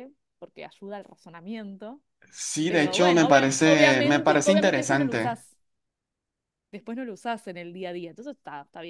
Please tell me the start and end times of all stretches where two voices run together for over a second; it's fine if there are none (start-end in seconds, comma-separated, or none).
2.7-5.4